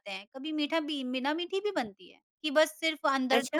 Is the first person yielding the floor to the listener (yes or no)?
no